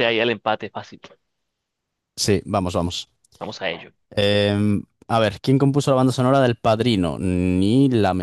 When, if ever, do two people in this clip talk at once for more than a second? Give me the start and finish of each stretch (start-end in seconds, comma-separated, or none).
none